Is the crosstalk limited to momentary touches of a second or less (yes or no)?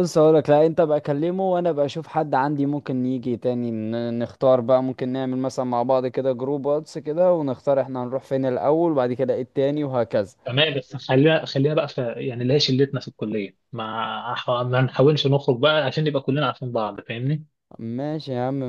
yes